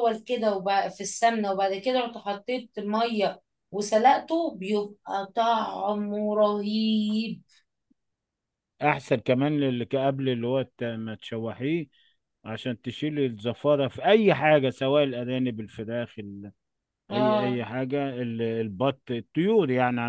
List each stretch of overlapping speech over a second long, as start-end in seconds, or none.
none